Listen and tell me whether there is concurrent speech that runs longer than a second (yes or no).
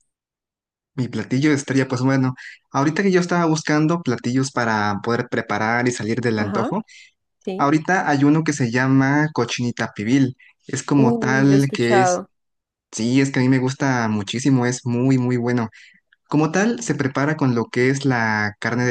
yes